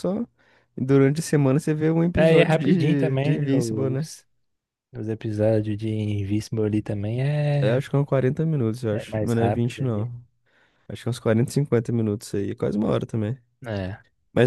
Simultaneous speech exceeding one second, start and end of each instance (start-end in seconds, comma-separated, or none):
2.1-4.1, 8.9-10.1